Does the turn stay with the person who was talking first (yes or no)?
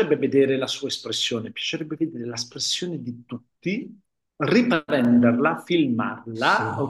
yes